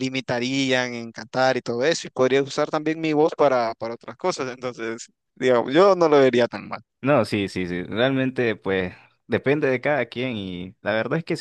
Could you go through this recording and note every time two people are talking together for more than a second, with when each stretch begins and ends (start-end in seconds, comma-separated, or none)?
none